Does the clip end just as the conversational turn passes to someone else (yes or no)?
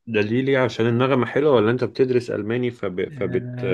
yes